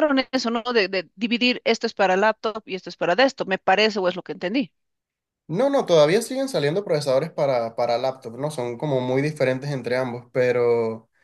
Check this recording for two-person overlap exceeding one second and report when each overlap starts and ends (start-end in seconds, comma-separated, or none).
none